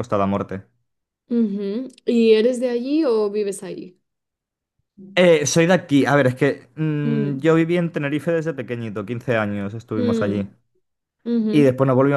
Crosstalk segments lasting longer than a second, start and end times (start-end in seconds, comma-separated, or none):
none